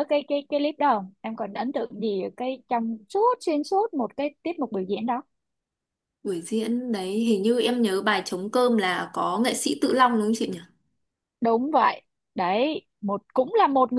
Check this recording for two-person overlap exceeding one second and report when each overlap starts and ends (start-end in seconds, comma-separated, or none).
none